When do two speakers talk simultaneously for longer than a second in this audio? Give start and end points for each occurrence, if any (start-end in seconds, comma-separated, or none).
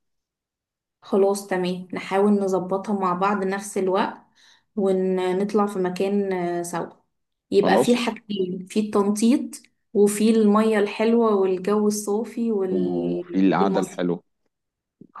12.7-14.0